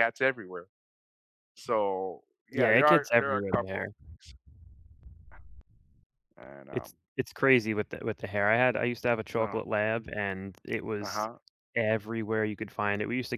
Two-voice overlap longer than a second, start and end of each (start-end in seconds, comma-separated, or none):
2.5-3.9